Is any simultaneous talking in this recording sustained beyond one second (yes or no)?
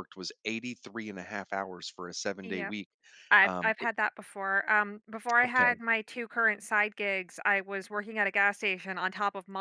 no